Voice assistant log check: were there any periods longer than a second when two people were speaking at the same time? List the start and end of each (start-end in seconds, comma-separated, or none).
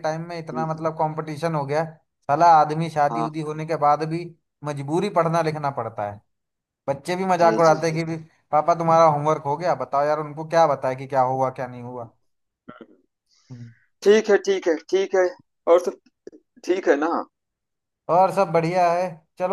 none